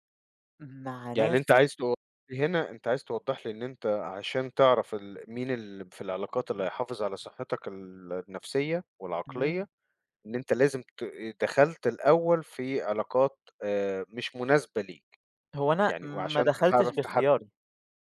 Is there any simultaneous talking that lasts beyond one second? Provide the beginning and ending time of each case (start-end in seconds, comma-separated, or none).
15.9-17.2